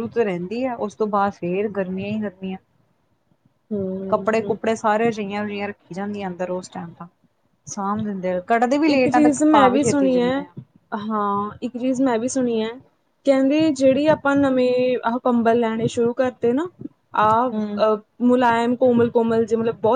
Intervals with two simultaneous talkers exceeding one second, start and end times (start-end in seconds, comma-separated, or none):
none